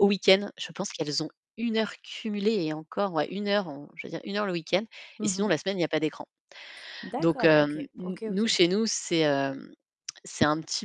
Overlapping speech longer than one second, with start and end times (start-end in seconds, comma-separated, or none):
7.2-8.6